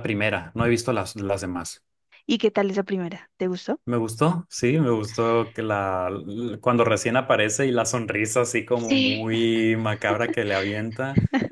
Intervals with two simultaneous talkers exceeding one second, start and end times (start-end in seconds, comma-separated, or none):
none